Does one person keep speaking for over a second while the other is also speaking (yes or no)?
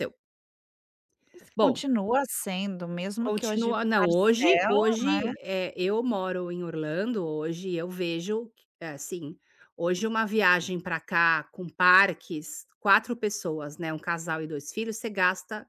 yes